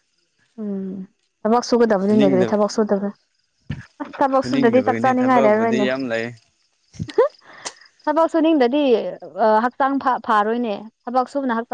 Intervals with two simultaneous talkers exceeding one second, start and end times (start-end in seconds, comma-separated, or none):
4.3-5.9